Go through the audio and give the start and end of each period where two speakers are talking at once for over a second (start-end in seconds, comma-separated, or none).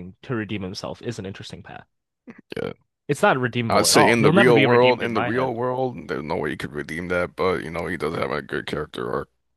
3.7-5.5